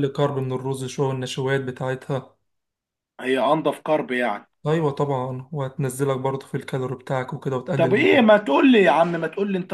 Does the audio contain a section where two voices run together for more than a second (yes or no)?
no